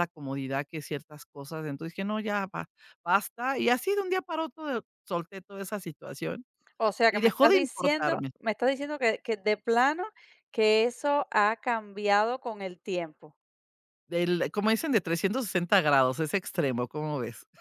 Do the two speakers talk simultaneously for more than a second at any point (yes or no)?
yes